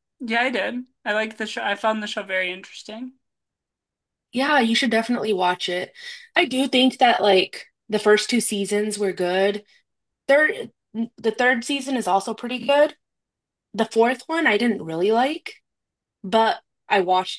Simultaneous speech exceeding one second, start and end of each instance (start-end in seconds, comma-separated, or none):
none